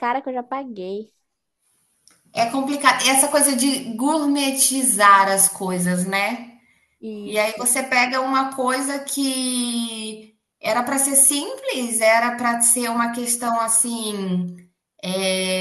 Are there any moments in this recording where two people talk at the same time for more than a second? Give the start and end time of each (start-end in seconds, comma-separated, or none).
none